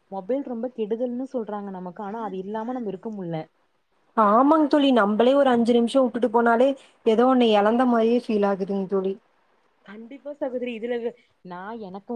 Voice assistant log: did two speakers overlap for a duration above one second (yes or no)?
no